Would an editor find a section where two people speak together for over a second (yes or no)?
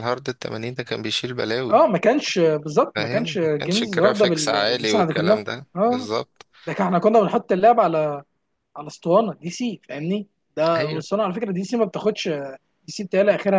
yes